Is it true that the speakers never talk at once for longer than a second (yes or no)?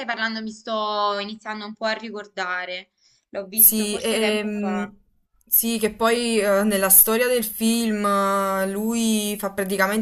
no